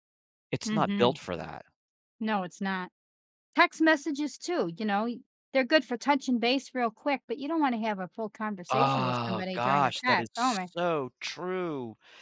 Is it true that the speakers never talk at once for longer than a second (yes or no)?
no